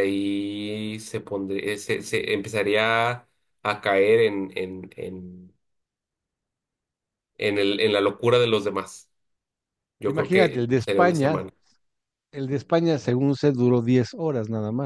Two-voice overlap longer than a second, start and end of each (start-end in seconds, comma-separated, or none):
10.1-11.4